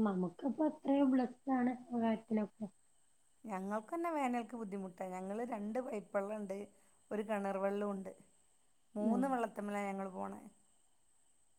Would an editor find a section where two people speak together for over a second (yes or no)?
no